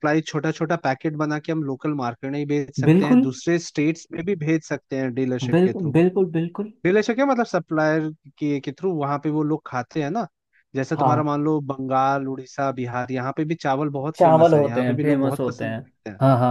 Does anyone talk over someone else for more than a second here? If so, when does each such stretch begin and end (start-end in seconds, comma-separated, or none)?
14.2-15.8